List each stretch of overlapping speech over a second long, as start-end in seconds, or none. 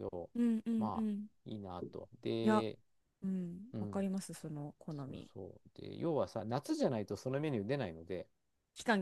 none